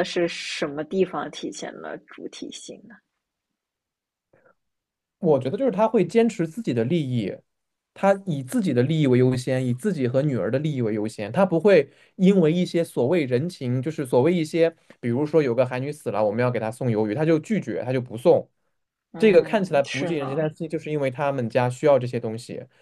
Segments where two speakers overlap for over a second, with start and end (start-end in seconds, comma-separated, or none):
19.2-20.5